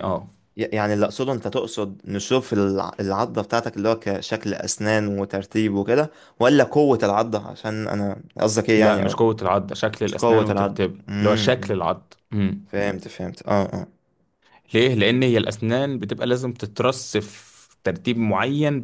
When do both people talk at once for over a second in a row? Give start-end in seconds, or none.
10.0-11.8